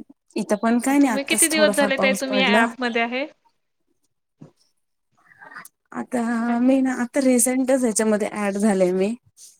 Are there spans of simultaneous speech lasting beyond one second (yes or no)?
yes